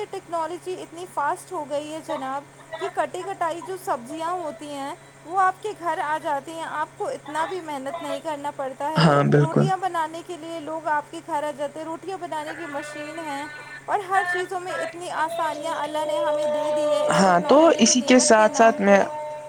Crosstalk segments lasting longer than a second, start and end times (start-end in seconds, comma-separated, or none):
17.1-19.0